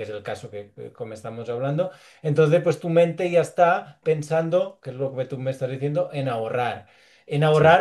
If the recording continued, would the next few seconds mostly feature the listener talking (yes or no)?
no